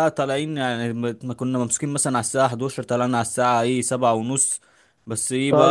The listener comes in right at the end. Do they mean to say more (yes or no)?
yes